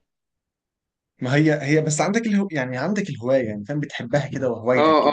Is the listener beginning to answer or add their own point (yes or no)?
yes